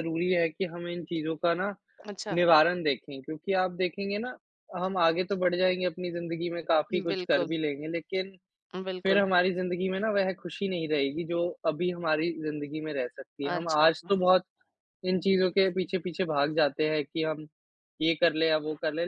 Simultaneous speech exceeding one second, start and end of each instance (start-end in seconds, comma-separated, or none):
none